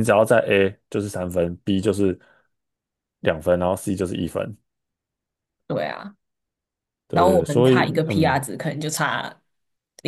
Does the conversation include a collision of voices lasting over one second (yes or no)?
yes